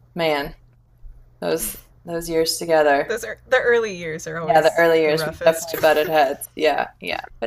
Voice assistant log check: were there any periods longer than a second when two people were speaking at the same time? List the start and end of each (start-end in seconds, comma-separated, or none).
4.4-5.8